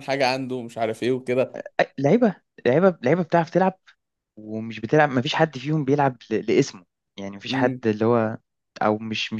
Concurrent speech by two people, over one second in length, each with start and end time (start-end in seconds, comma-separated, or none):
none